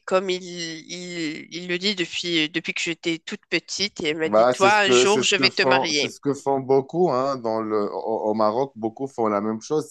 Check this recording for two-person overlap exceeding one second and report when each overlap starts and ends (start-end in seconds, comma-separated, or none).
4.2-6.2